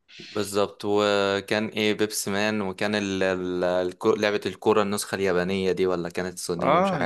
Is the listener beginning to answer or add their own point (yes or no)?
yes